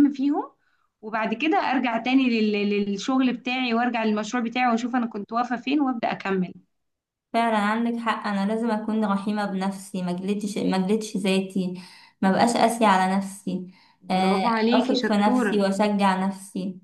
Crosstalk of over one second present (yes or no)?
yes